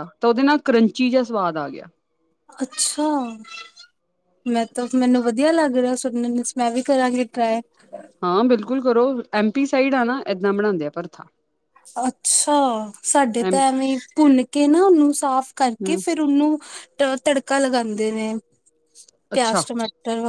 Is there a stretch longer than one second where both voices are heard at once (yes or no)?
no